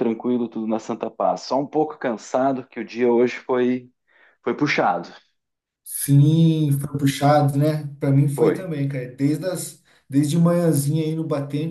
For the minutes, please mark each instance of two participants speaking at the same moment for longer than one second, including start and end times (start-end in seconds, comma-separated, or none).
none